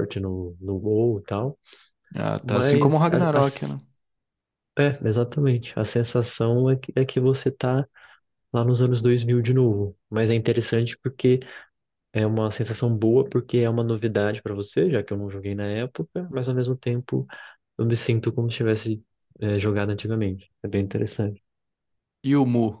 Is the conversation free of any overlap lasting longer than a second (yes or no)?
no